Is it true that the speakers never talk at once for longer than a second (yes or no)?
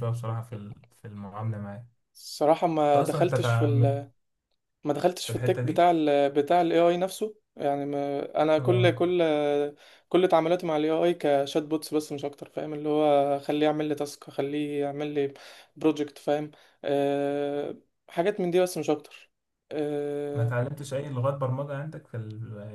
no